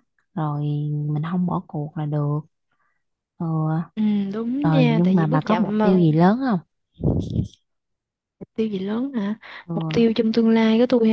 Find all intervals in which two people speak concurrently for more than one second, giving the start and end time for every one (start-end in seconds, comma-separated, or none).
4.6-6.0